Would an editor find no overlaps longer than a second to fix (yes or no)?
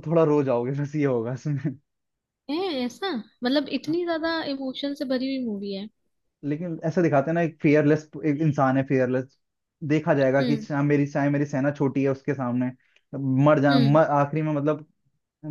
yes